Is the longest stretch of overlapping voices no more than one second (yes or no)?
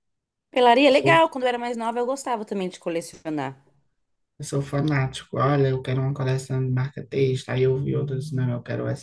yes